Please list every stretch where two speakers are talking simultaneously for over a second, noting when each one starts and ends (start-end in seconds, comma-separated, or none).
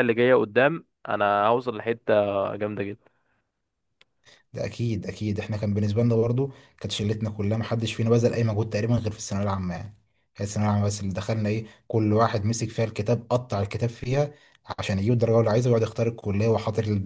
none